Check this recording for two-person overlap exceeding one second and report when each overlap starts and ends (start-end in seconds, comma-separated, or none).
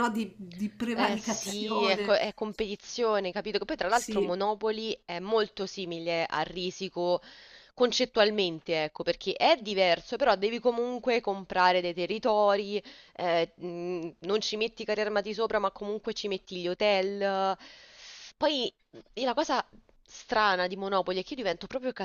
0.9-2.1